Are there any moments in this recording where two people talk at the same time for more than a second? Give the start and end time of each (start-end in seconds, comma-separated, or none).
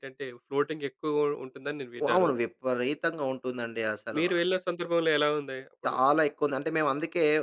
none